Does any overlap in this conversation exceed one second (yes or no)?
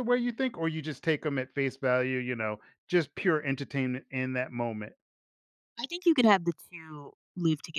no